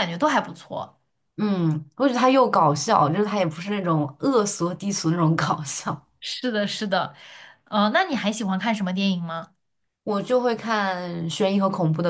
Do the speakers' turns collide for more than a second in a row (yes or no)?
no